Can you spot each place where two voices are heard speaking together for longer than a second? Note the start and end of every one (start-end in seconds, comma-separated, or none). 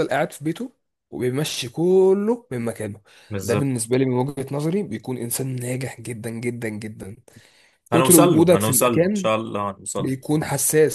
7.9-9.3